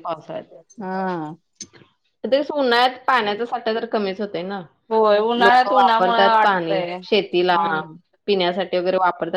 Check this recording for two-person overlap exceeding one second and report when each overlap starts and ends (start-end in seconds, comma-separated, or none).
5.5-7.6